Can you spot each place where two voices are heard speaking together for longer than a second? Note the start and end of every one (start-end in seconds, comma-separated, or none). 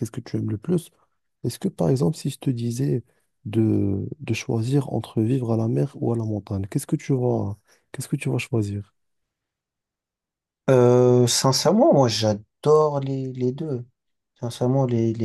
none